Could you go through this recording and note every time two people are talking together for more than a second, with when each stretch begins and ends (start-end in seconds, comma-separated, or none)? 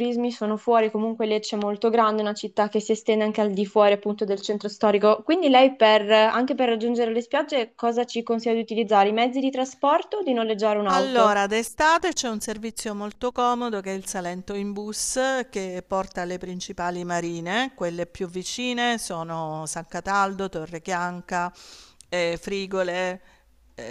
none